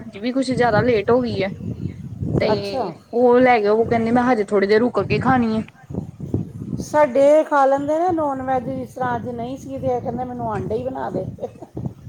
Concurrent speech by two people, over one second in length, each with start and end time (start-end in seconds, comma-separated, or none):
none